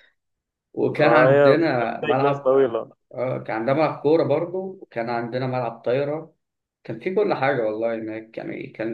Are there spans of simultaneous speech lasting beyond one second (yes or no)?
yes